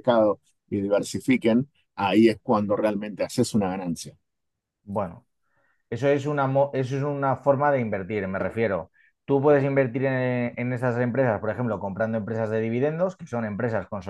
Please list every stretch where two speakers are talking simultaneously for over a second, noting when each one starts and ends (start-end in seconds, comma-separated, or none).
none